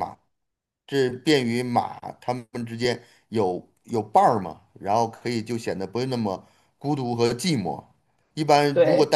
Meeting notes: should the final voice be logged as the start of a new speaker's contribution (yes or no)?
no